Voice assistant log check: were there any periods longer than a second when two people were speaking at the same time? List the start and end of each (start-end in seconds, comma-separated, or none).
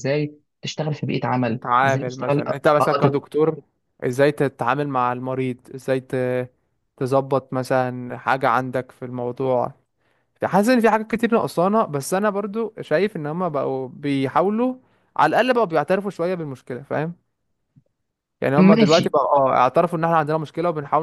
1.5-3.2